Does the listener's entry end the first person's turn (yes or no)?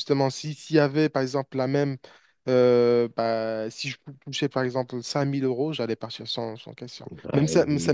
no